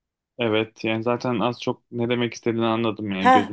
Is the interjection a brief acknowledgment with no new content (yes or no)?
no